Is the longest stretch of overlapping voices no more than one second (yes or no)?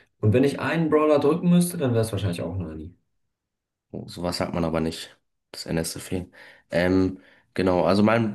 yes